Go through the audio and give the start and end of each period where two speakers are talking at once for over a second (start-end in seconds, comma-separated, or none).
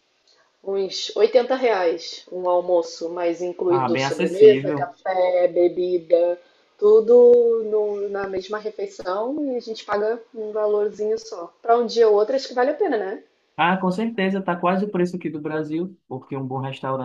3.7-5.0